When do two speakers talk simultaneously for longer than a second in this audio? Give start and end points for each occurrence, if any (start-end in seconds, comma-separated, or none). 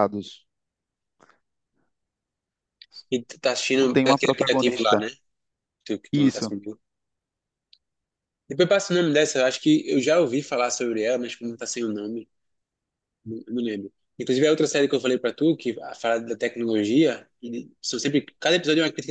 3.8-5.0